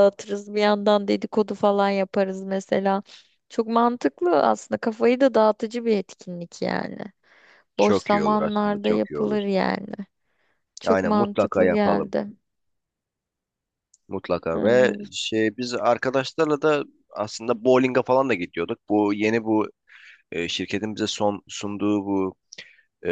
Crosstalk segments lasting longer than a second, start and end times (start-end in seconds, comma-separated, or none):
7.8-9.4, 10.9-12.1